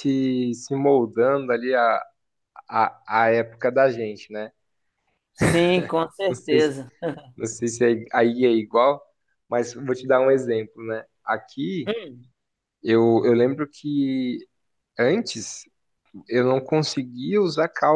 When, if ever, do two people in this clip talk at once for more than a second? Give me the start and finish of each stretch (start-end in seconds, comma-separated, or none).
none